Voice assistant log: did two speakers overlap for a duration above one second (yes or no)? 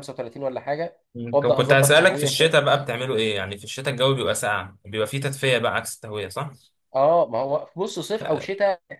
yes